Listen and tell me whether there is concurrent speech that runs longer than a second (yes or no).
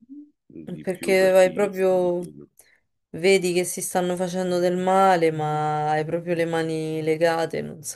yes